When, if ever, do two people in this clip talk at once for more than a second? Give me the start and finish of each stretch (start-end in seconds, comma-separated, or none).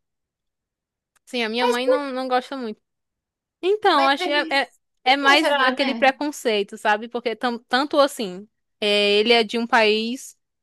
3.9-6.1